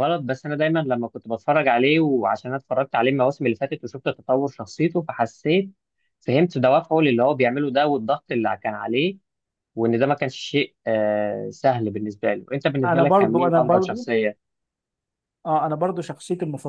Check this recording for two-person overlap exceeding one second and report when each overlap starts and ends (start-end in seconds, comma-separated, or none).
12.8-14.1